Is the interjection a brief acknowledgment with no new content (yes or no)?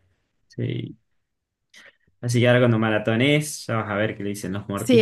no